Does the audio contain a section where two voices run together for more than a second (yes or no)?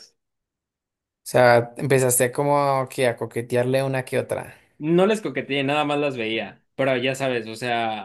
no